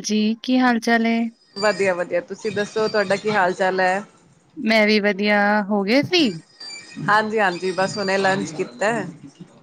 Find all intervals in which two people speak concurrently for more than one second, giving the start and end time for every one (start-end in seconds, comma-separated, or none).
none